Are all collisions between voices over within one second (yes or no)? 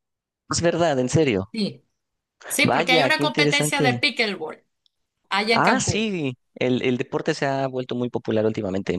no